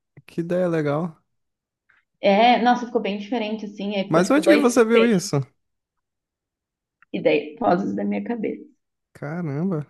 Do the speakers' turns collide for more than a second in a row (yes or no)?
yes